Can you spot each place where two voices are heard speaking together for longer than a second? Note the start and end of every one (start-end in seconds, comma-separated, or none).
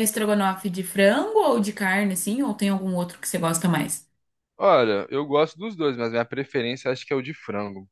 none